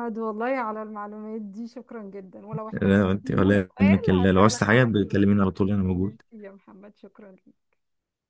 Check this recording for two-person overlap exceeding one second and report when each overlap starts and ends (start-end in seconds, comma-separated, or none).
2.7-5.2